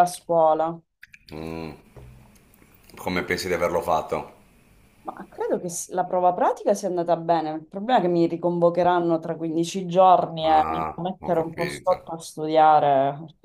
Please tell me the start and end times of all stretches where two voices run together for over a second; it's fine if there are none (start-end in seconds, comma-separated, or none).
10.4-12.0